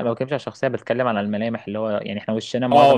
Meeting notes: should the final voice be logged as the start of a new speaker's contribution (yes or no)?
yes